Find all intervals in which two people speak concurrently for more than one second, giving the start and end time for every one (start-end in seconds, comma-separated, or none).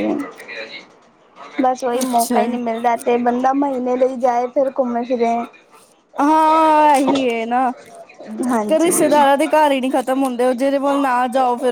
none